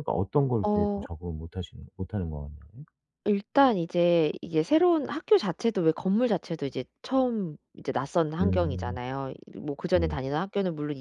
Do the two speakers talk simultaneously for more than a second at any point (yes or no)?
no